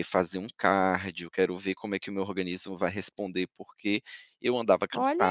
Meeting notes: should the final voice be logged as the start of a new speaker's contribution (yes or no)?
yes